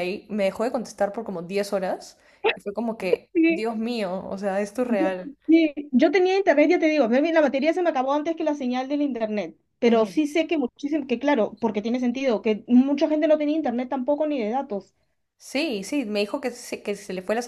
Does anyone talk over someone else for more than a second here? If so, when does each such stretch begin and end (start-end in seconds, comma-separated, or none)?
none